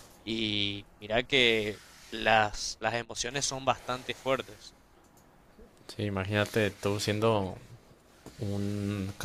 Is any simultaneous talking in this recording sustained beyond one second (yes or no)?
no